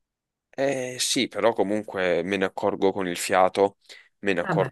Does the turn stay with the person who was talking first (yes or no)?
yes